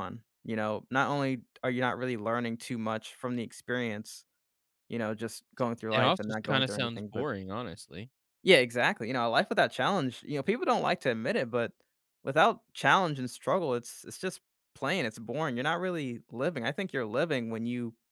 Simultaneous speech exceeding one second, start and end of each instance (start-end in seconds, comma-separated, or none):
5.9-7.3